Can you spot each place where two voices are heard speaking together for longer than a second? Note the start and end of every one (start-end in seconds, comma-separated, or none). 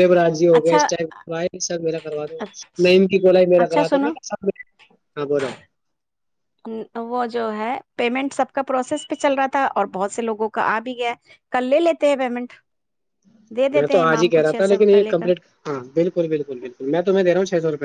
13.7-15.3